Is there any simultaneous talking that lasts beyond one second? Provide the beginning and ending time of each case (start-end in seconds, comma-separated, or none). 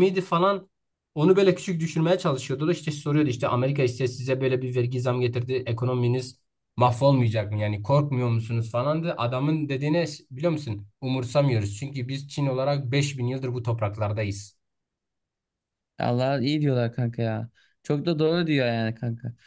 none